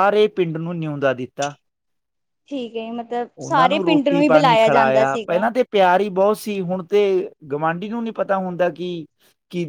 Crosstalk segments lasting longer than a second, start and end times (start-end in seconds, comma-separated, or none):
3.4-5.4